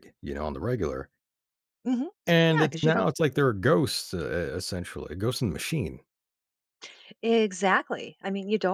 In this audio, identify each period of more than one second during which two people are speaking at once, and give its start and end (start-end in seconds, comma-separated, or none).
none